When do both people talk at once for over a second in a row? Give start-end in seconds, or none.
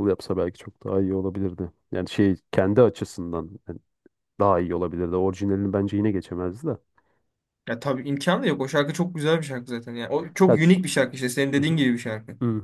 none